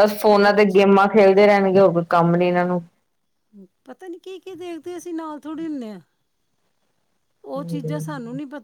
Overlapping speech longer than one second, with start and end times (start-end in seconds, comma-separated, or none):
none